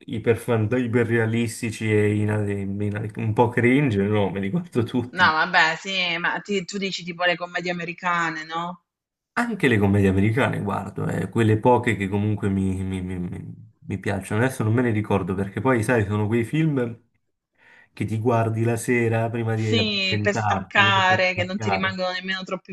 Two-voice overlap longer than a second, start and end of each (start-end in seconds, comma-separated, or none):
19.5-22.0